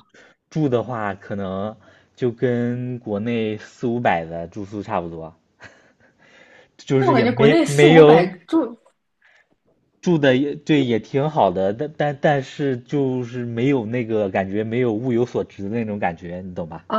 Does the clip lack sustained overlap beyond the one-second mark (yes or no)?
no